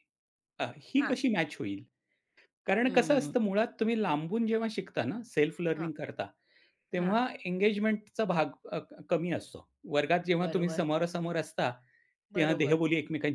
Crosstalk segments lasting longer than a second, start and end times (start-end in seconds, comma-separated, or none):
none